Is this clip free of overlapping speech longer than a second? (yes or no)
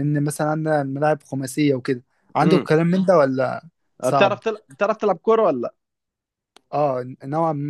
yes